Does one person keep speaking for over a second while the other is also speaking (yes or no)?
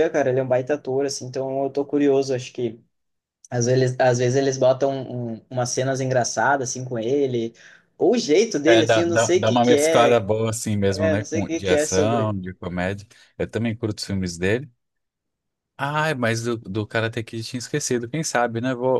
yes